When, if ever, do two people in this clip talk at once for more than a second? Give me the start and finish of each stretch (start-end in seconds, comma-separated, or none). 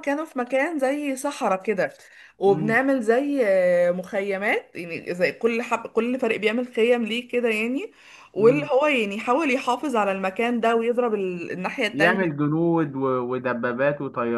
none